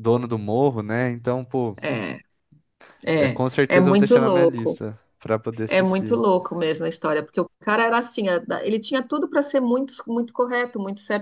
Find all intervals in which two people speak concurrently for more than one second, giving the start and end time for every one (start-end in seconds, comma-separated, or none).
3.1-4.8